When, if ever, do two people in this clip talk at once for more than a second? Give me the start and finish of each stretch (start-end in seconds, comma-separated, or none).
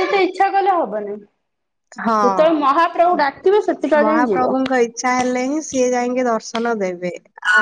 4.0-5.7